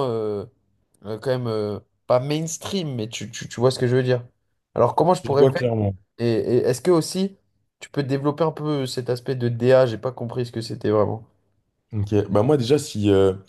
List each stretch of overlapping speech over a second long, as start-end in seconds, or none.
none